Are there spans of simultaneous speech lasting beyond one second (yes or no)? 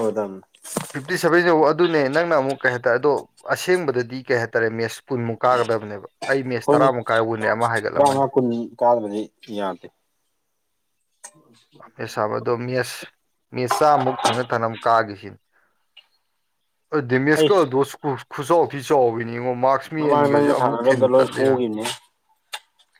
yes